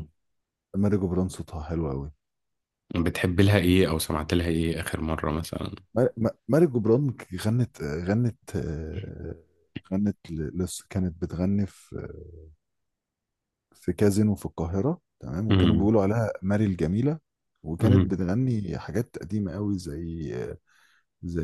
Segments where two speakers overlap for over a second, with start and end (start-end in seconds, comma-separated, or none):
none